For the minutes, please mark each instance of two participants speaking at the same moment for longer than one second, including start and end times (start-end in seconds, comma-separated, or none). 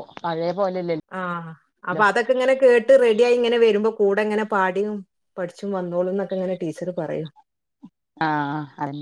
none